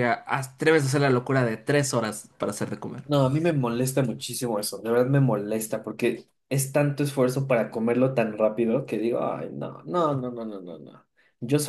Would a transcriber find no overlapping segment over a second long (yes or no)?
yes